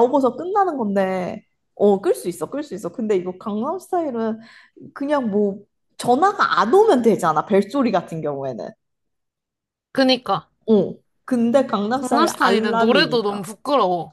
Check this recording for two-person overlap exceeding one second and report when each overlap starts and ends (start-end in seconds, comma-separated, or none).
11.9-13.4